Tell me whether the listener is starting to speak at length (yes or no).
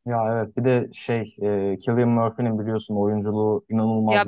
yes